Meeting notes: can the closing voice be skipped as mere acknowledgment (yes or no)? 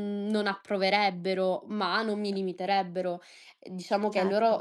yes